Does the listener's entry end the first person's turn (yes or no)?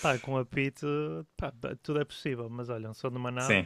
no